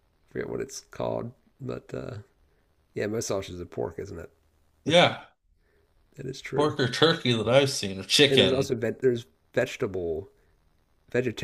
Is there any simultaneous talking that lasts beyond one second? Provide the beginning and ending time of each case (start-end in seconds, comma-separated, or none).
none